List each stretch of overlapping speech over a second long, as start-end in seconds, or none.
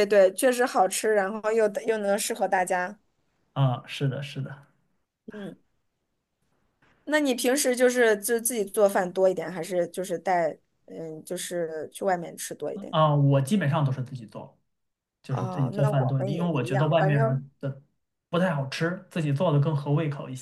15.3-17.4